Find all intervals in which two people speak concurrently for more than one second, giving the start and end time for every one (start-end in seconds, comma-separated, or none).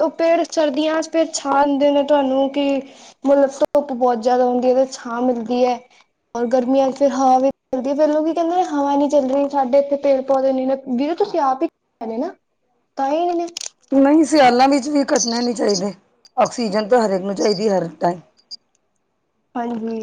none